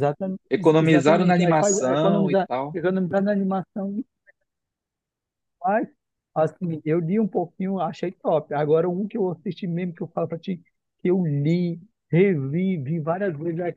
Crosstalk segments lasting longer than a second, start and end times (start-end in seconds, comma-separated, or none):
0.8-2.8